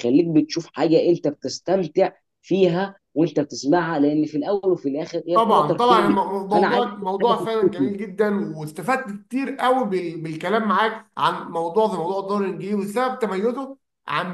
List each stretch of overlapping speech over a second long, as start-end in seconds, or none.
5.3-7.9